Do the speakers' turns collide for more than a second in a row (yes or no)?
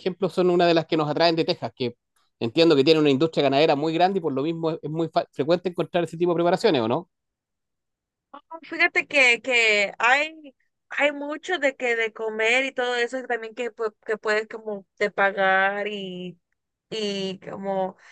no